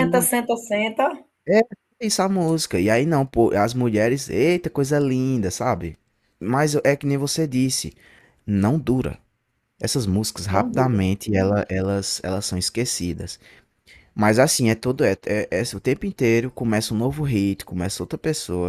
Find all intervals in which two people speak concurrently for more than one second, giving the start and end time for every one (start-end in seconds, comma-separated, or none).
none